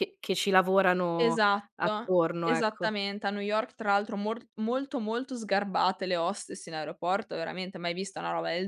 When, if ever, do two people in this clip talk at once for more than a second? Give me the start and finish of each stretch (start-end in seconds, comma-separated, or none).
1.2-2.9